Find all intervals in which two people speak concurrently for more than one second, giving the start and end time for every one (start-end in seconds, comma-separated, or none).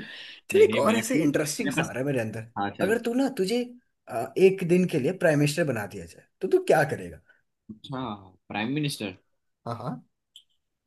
0.5-1.9